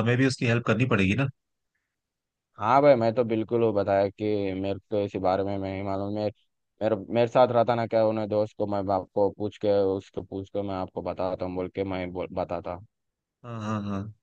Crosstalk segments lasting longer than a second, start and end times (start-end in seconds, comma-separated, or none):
none